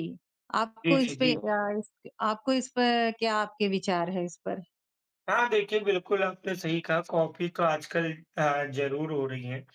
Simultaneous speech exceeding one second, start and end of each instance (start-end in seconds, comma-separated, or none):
none